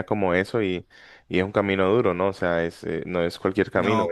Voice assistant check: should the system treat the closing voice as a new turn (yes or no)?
no